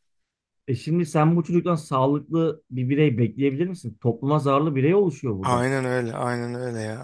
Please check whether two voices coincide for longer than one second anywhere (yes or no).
no